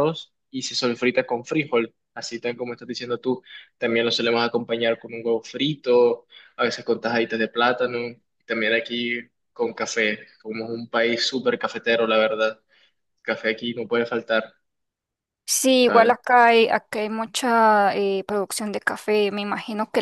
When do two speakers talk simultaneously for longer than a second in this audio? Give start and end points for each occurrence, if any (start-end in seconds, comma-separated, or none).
none